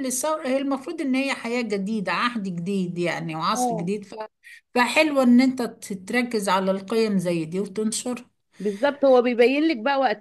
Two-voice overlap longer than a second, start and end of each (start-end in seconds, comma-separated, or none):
none